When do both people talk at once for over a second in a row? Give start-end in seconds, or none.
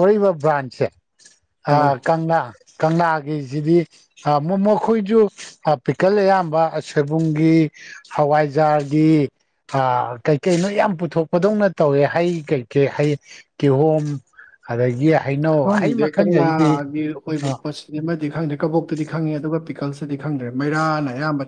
none